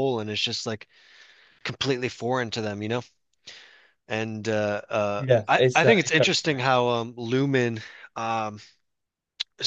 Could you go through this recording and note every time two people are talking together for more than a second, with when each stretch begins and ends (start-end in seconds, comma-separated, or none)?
5.2-6.8